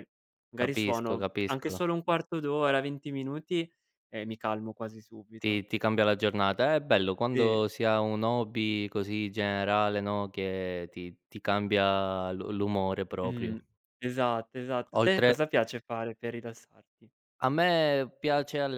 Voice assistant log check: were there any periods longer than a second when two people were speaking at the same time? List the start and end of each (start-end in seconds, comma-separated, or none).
0.5-1.8